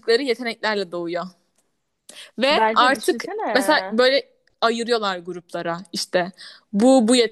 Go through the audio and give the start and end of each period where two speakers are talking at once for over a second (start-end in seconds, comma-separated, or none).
2.5-4.0